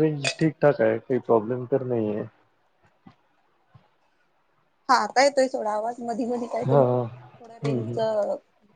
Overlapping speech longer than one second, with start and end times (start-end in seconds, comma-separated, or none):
6.7-8.0